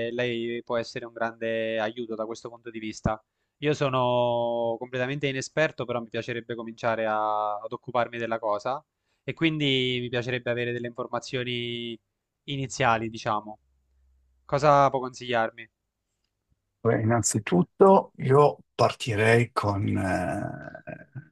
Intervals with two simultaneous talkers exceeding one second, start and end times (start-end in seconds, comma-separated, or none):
none